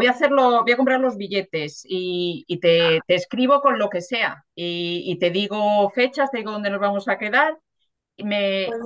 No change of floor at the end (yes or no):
yes